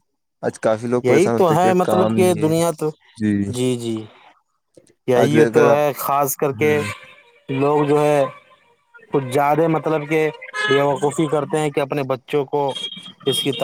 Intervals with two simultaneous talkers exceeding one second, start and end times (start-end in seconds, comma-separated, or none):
1.0-2.5